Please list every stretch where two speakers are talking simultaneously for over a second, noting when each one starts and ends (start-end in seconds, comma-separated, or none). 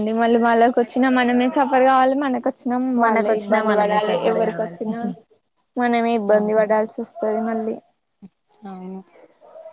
3.0-4.8